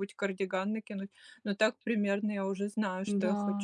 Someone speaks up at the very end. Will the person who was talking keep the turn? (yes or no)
no